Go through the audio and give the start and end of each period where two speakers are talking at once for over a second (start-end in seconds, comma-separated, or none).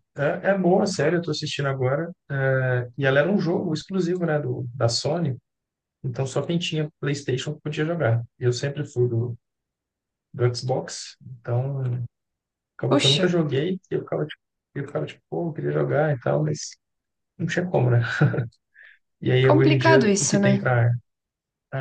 19.4-20.7